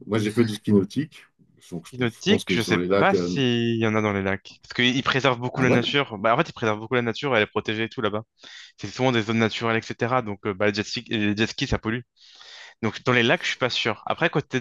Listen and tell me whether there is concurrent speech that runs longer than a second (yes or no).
yes